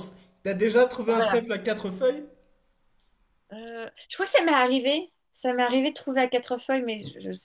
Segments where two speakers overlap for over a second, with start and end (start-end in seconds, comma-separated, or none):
none